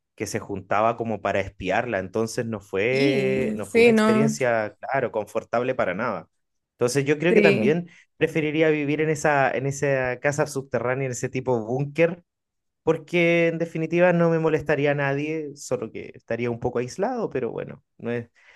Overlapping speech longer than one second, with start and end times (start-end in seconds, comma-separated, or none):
2.9-4.3